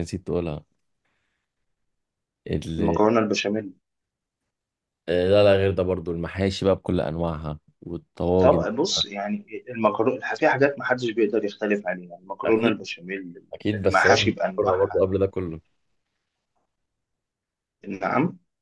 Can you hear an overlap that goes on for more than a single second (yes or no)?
yes